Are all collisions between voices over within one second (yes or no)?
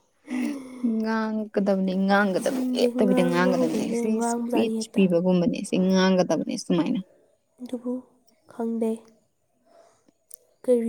no